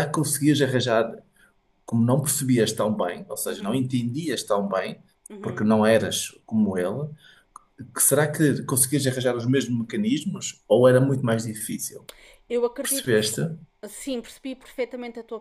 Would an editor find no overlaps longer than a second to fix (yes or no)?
yes